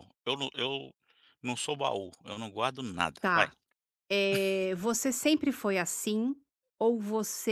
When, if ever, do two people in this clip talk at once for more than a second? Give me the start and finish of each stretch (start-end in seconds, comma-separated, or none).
none